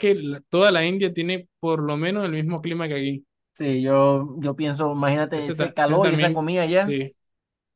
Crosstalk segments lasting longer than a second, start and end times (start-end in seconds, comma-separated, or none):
5.3-7.0